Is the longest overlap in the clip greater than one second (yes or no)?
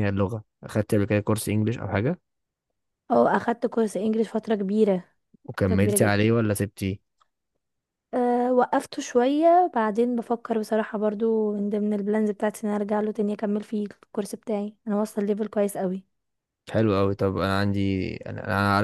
no